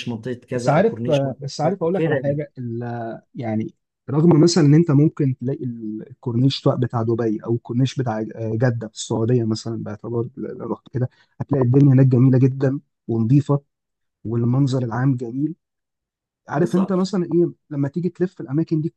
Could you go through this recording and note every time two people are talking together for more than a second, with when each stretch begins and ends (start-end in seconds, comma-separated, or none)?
0.6-2.4